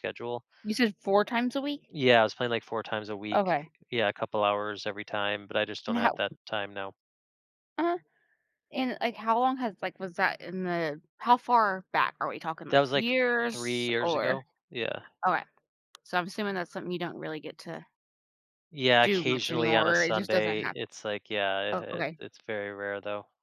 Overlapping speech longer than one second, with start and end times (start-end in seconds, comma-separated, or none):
12.7-14.4, 19.0-20.8